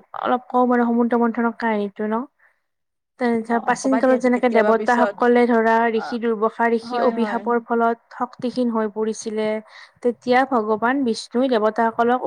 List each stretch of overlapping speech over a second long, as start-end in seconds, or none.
3.5-5.2